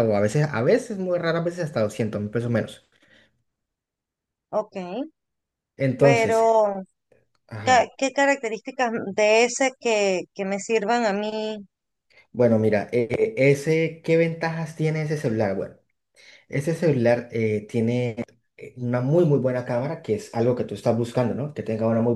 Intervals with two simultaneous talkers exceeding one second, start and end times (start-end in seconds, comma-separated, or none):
none